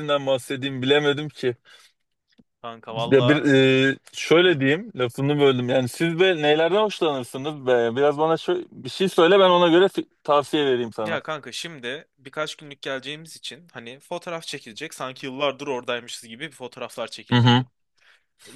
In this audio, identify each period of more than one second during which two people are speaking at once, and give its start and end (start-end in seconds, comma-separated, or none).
none